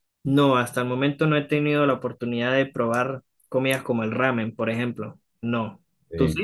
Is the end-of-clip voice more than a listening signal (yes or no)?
yes